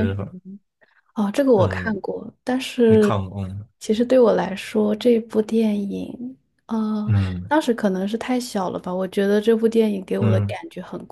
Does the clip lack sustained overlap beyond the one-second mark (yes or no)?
yes